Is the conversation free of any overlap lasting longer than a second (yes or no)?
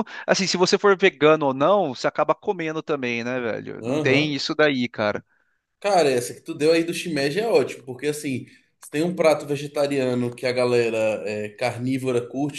yes